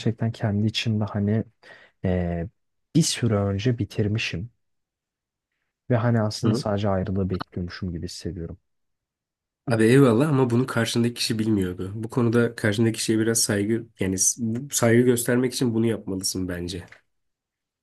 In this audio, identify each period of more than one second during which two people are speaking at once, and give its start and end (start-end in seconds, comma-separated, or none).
none